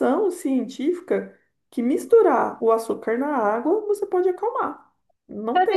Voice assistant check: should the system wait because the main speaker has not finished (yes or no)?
no